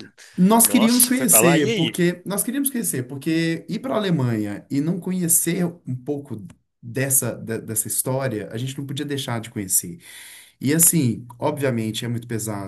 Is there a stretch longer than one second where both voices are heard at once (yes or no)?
yes